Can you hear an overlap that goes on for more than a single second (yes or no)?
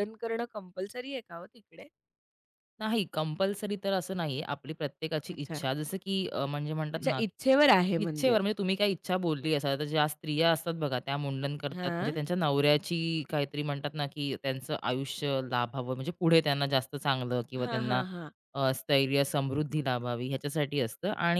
yes